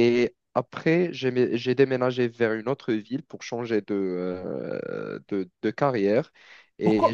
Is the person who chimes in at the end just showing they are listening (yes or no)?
no